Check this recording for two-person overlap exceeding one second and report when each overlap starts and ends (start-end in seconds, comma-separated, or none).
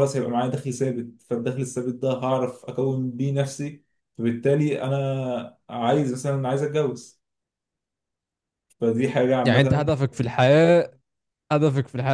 none